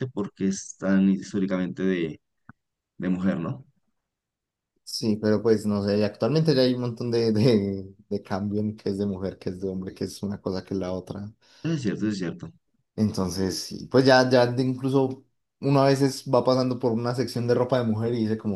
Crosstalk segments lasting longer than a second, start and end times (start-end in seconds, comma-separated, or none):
none